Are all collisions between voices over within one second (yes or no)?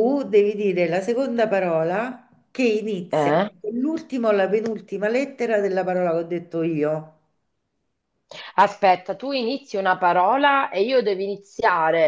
yes